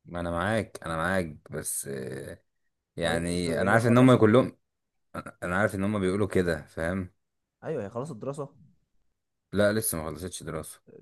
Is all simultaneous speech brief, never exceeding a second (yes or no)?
no